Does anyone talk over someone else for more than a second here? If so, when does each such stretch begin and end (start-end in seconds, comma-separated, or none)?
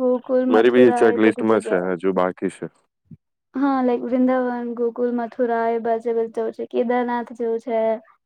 0.5-1.9